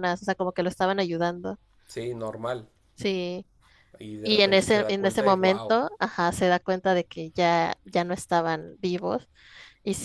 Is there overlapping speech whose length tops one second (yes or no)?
yes